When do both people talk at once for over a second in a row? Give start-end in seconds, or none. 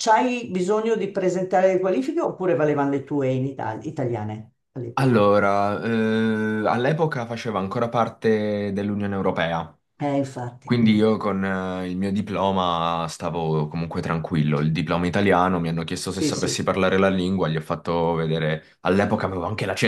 none